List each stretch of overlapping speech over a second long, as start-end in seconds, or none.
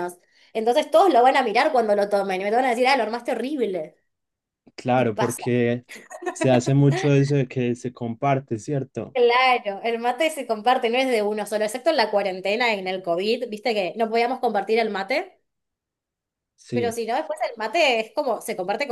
none